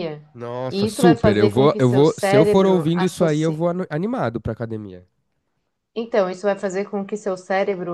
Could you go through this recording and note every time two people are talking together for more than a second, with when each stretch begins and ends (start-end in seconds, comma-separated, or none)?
0.7-3.7